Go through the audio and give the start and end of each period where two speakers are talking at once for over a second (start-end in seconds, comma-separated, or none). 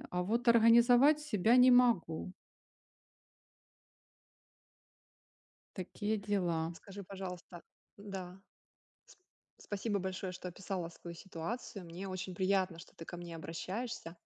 none